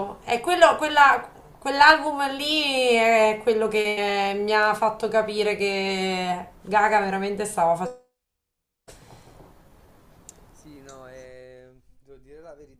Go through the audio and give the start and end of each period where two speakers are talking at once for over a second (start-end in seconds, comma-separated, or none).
none